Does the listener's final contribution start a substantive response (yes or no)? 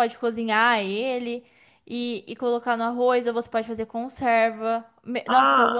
yes